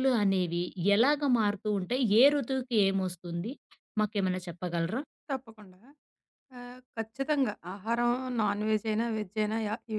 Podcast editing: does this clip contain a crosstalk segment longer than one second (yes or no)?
no